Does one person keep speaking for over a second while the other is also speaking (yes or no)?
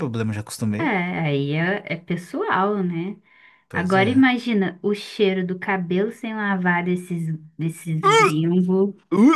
no